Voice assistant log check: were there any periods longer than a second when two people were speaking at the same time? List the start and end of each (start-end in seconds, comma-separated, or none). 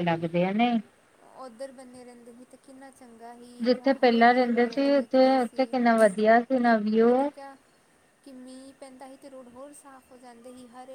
3.6-5.6